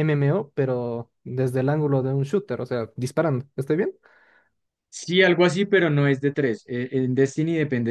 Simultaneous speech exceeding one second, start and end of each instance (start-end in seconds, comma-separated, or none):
none